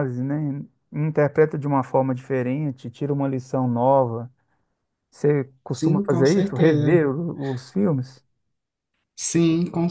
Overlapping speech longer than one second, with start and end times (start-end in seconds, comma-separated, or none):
5.7-7.0